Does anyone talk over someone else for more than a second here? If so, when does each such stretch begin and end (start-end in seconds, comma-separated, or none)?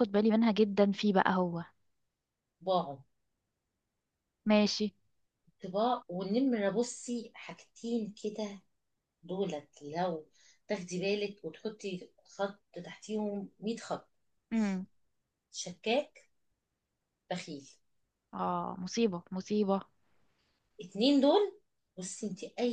none